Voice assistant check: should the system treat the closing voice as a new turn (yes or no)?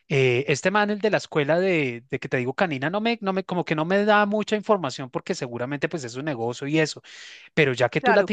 no